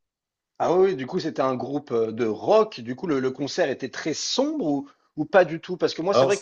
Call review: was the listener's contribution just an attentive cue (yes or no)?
yes